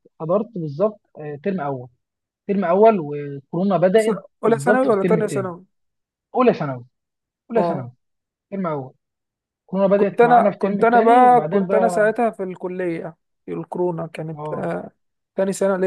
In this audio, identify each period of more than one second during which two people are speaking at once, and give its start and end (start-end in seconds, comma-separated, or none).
4.0-5.5, 9.9-12.1